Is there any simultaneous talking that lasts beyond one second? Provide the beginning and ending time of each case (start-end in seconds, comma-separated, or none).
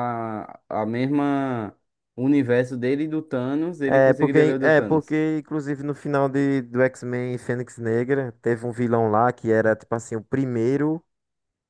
3.9-5.2